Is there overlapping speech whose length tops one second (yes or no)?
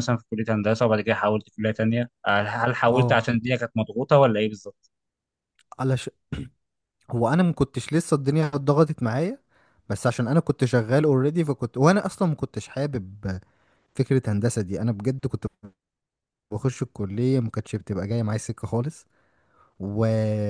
no